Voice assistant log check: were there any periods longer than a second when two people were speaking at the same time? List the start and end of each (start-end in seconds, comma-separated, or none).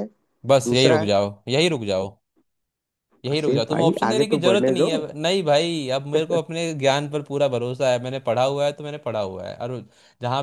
3.3-5.0